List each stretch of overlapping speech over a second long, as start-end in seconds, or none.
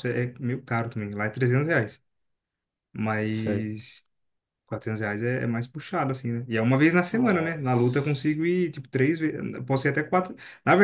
7.1-8.3